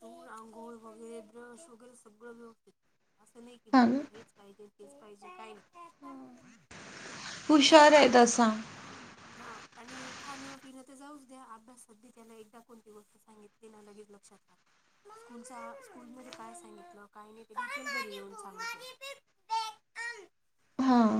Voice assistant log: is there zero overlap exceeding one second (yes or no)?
yes